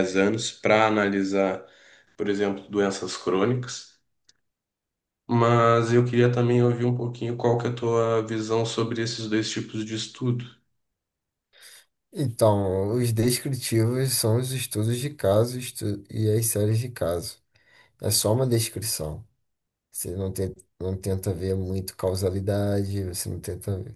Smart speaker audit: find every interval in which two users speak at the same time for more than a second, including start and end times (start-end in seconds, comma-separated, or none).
none